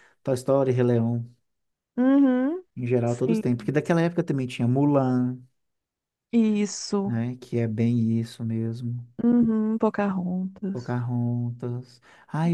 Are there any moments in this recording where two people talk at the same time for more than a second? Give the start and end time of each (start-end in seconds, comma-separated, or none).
none